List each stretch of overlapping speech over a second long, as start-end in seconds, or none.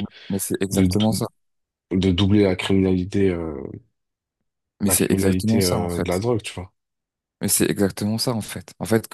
4.8-6.1